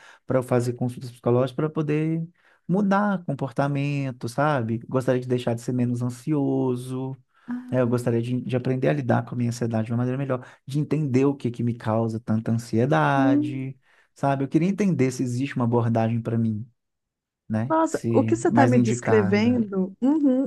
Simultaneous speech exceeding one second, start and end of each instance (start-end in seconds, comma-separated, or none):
17.7-19.6